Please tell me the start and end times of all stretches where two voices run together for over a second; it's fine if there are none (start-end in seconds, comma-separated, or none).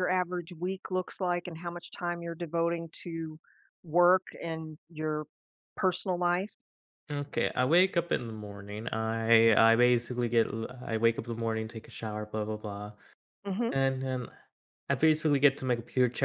none